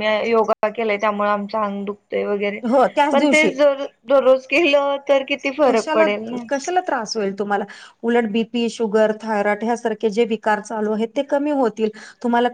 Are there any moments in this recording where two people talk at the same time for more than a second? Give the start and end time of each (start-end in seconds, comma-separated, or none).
none